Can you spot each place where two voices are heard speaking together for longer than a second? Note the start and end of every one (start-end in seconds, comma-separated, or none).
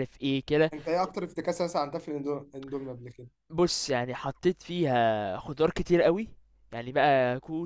none